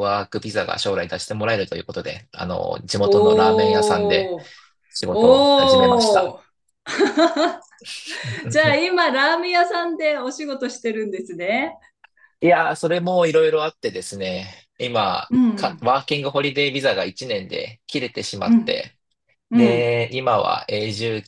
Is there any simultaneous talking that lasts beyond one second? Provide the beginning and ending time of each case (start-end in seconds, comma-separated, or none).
3.0-4.3, 5.1-6.3